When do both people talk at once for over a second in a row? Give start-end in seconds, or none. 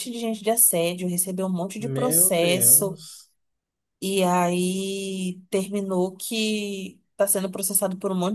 1.8-3.0